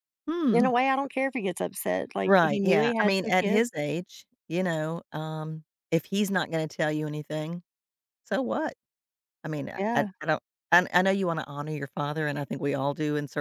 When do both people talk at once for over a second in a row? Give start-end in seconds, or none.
2.2-3.7